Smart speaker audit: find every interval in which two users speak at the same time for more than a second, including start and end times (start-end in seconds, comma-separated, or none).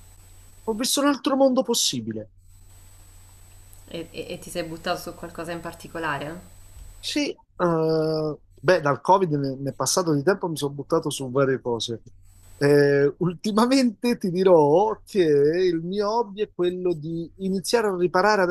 none